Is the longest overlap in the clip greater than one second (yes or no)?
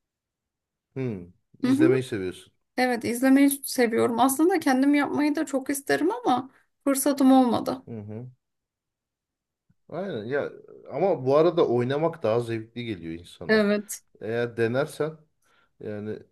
no